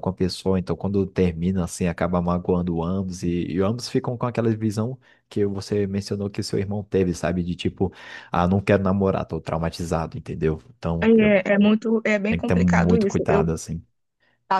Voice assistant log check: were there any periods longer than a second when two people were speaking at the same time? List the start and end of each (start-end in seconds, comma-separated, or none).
12.3-13.5